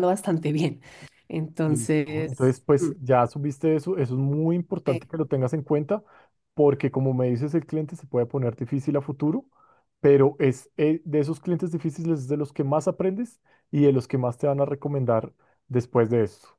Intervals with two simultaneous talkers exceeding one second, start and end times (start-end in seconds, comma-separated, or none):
1.6-2.9